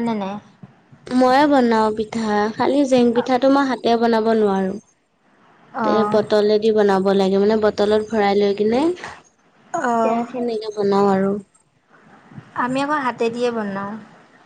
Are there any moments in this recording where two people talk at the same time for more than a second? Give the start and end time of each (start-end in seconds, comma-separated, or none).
none